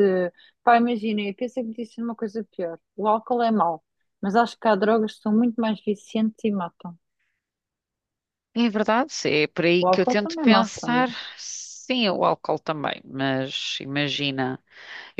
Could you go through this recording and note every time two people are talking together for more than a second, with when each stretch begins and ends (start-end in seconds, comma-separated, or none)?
9.8-11.3